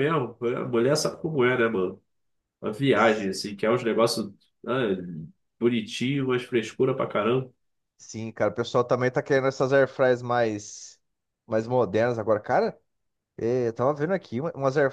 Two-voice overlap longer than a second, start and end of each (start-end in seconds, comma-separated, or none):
none